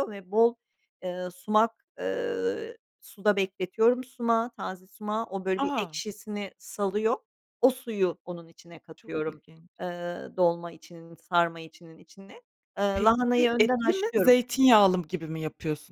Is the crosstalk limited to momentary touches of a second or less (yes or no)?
no